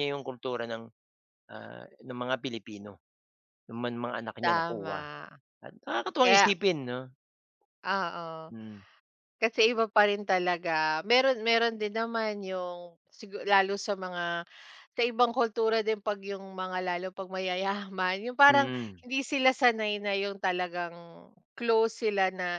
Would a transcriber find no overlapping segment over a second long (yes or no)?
yes